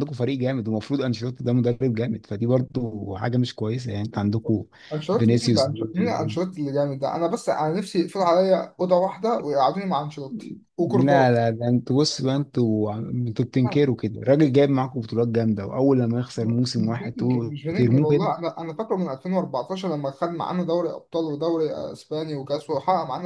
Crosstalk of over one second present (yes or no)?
yes